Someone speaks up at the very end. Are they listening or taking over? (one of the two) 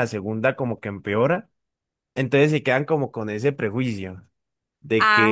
listening